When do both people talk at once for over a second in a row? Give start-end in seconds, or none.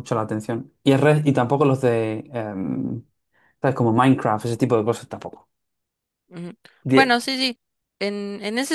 none